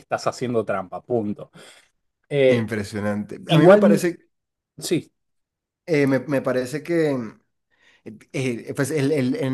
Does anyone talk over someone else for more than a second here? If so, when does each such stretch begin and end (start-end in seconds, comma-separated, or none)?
none